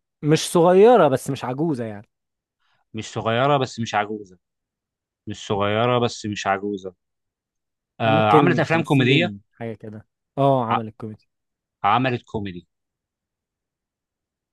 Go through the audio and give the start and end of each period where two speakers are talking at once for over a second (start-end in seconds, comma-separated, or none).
8.0-9.3